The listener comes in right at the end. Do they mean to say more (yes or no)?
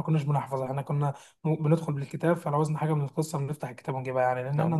yes